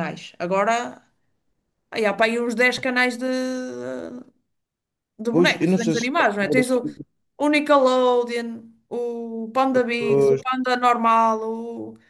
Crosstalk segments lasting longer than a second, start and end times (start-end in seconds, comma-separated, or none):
5.3-6.8